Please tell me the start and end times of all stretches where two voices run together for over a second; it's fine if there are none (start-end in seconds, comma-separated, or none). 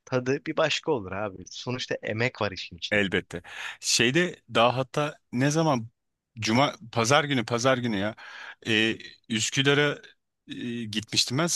none